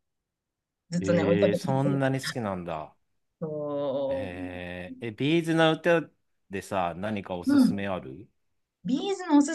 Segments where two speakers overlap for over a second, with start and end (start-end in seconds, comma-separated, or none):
1.0-2.5